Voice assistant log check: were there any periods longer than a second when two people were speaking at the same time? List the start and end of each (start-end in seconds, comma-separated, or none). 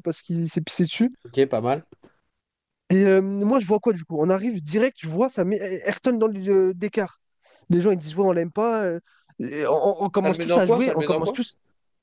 10.2-11.4